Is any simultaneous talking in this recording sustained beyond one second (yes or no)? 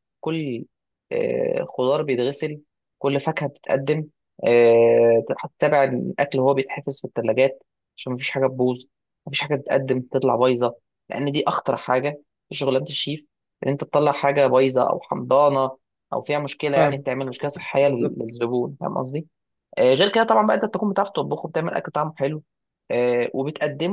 yes